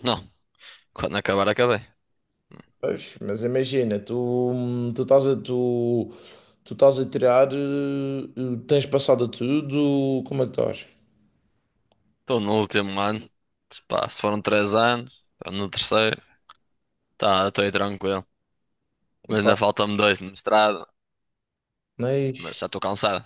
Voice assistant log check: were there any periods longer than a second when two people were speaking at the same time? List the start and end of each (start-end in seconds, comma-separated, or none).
none